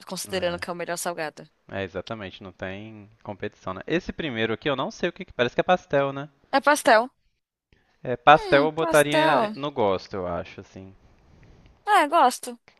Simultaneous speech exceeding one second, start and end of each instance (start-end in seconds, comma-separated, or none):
8.3-9.6